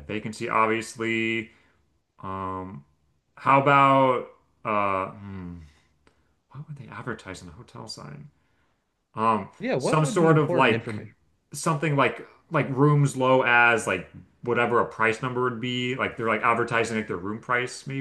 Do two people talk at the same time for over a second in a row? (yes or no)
yes